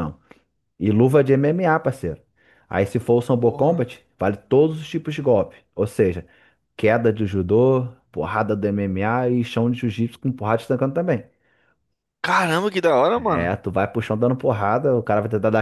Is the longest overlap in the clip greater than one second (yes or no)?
no